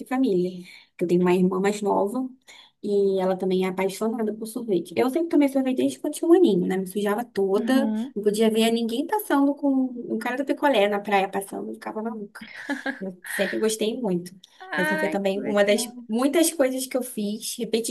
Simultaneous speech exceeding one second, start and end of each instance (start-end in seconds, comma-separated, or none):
14.8-16.0